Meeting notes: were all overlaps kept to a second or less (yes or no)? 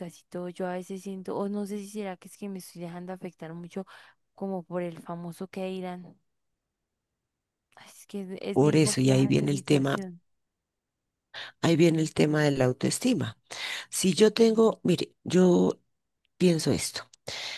no